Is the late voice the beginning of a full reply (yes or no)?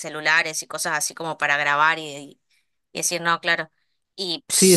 yes